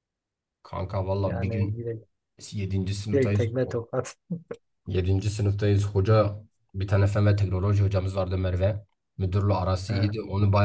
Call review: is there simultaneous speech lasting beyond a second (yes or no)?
no